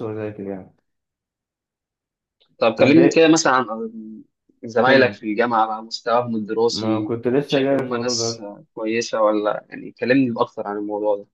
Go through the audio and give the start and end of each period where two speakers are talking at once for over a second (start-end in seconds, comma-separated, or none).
6.7-8.4